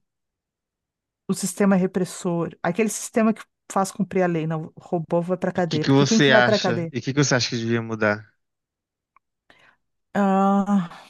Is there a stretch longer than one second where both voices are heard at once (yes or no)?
yes